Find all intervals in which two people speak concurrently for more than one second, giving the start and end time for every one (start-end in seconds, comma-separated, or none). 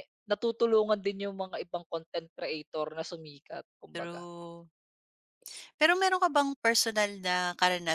none